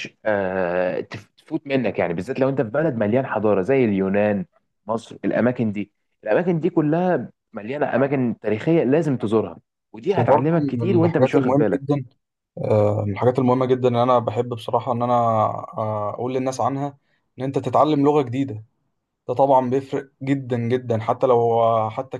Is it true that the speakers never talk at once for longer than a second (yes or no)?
no